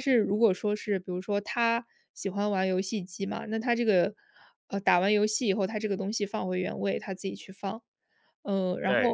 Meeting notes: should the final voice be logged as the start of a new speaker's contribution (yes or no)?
no